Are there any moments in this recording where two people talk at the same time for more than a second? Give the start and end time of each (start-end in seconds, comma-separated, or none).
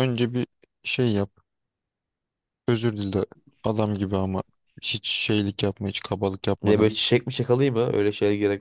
none